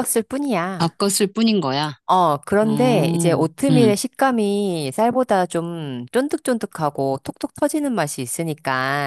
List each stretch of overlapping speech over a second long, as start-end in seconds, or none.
2.6-3.9